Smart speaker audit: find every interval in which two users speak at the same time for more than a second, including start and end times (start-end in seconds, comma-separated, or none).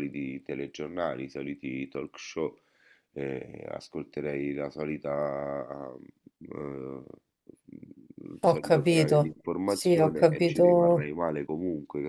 8.4-11.1